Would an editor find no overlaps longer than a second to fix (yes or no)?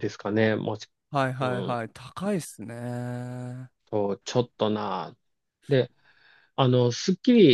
yes